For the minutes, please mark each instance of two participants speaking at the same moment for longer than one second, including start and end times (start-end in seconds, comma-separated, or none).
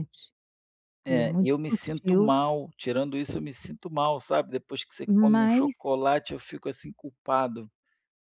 1.1-2.3